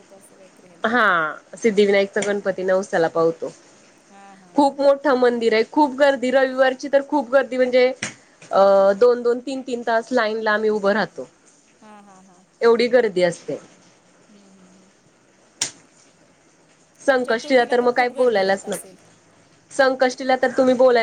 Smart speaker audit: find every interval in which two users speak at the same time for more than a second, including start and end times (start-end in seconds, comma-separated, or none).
17.2-18.9